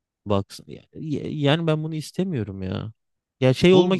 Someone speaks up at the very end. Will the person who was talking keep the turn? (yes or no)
yes